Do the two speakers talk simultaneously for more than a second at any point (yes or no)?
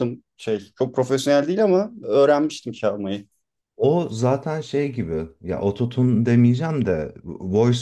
no